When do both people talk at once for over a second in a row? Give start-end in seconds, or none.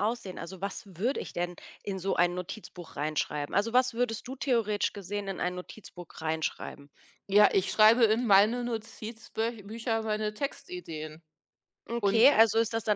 none